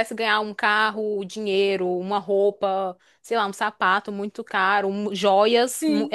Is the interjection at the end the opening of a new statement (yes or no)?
no